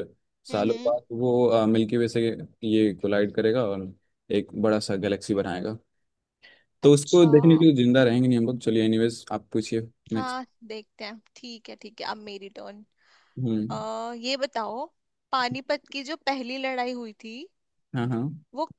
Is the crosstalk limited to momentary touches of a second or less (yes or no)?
yes